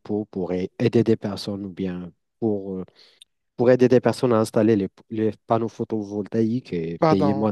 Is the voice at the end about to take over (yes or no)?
yes